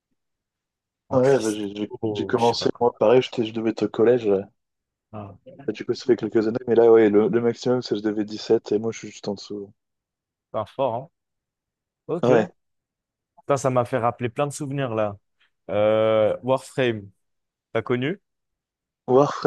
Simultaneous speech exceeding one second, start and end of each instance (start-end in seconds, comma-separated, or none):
1.1-2.9